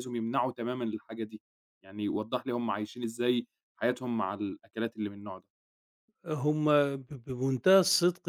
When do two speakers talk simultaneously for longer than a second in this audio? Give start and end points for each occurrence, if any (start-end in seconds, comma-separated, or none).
none